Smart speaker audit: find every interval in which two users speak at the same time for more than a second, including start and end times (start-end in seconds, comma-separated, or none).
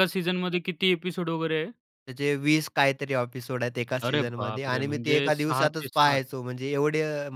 4.0-6.2